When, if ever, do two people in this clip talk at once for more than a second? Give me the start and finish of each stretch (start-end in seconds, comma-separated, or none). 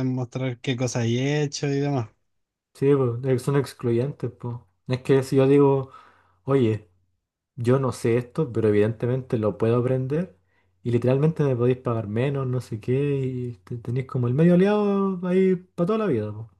none